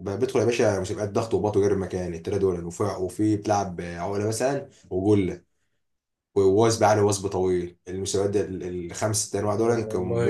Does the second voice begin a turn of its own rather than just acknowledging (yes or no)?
no